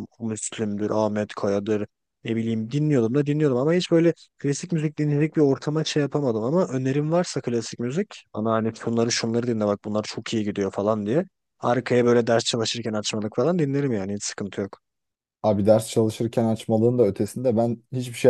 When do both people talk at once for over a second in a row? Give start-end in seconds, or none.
none